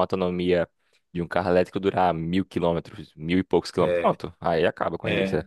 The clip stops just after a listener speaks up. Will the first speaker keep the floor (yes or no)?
no